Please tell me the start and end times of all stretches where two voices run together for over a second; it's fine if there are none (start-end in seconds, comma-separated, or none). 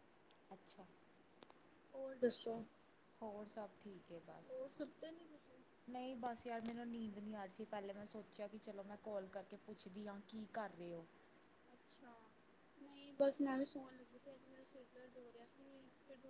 none